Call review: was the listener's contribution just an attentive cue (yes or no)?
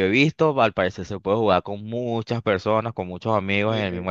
no